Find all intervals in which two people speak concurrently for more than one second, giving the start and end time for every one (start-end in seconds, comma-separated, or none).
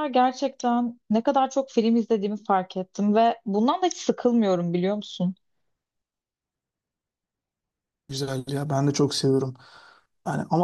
none